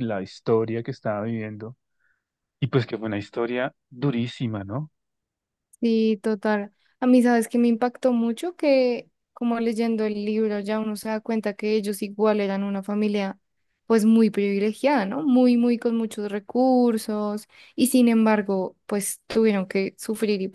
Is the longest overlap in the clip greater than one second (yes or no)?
no